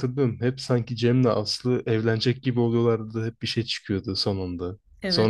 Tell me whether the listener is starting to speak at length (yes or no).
no